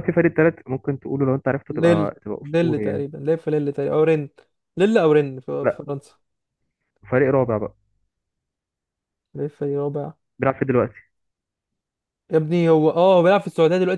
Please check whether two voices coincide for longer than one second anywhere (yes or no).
yes